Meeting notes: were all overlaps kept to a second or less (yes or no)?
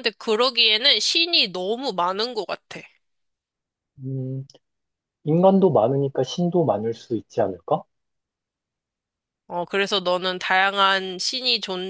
yes